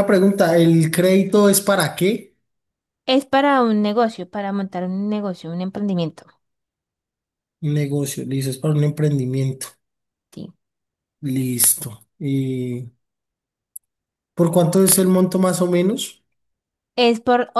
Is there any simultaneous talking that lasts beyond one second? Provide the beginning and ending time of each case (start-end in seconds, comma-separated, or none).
none